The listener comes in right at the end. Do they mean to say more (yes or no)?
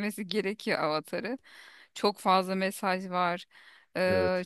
no